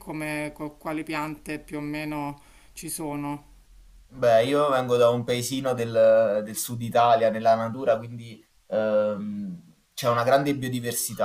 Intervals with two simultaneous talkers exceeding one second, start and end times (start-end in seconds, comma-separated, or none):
none